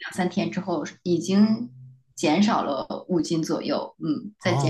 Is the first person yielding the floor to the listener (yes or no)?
yes